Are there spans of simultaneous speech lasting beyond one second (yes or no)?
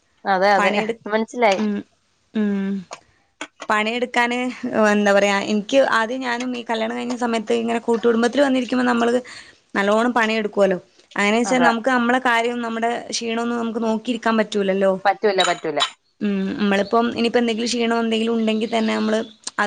no